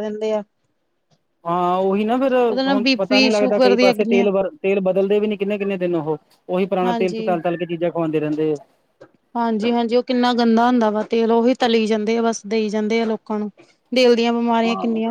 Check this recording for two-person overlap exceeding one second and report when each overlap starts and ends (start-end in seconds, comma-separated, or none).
2.5-4.3